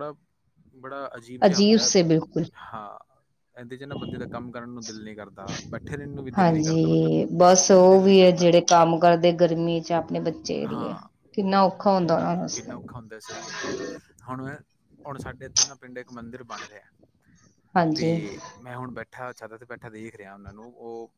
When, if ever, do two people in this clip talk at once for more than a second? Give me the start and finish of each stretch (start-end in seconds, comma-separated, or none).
6.4-8.5